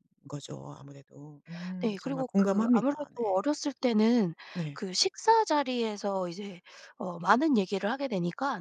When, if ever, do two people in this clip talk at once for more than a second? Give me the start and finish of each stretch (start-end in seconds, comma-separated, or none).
1.8-3.4